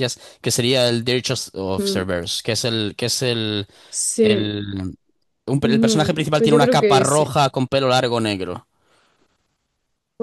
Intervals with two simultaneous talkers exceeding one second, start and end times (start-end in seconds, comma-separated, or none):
5.6-7.3